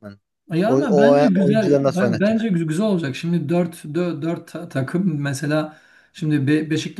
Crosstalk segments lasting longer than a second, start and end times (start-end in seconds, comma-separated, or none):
0.7-2.5